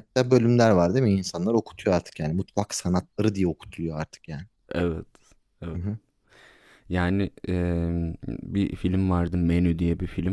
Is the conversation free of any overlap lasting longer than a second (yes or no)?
yes